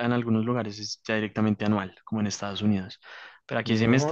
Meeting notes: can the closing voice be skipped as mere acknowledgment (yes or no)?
no